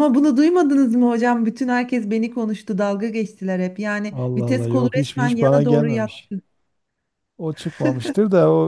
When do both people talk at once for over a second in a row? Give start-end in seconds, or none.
4.1-6.3